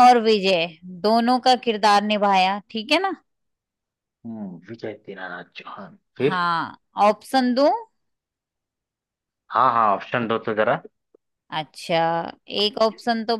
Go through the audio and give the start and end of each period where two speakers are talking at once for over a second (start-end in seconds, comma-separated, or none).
none